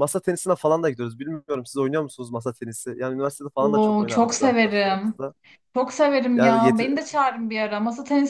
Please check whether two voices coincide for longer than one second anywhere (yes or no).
yes